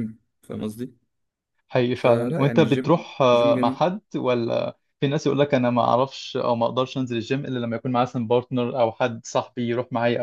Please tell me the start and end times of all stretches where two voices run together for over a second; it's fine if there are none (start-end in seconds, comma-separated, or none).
1.9-3.8